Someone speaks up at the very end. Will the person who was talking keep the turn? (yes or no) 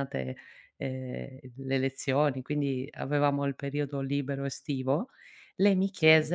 yes